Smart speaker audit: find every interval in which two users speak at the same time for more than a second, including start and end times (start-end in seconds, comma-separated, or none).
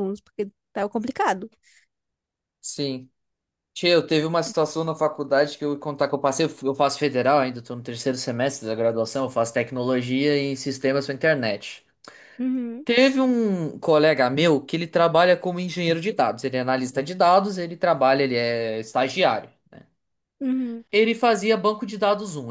none